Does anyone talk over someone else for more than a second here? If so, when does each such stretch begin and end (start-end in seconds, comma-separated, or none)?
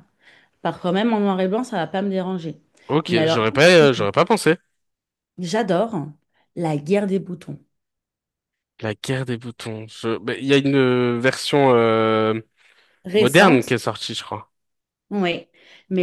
none